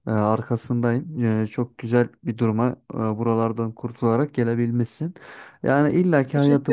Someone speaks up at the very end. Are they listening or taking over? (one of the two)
listening